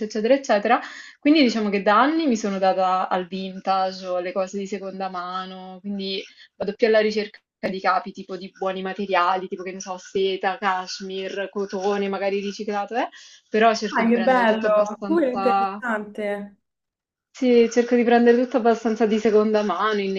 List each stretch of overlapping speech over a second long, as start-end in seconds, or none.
13.9-15.8